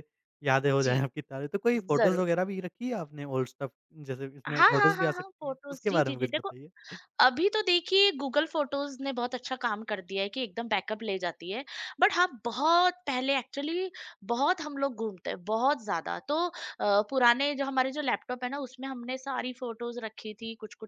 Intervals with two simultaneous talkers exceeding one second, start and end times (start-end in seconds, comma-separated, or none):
4.5-6.5